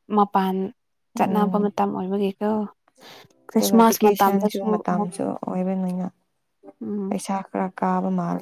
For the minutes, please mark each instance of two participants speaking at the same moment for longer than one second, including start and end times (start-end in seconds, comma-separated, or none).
3.5-5.1